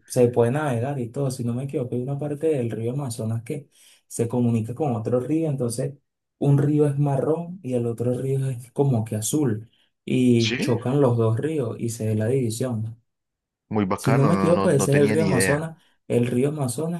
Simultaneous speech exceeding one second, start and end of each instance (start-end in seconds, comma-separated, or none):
13.9-15.6